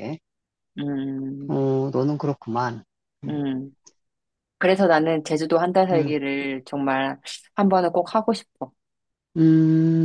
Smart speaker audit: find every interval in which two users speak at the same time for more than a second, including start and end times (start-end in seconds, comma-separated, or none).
none